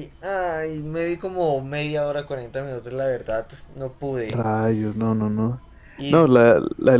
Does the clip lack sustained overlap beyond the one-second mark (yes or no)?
yes